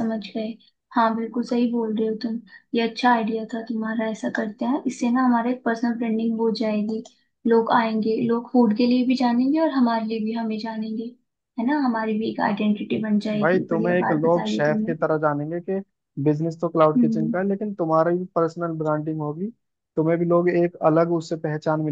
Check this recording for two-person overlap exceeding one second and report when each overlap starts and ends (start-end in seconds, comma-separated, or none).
13.4-14.9